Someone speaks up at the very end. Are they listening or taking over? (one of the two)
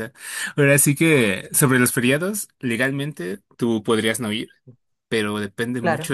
listening